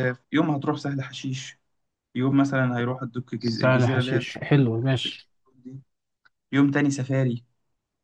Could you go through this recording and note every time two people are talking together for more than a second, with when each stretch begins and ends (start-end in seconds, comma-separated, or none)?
3.4-5.2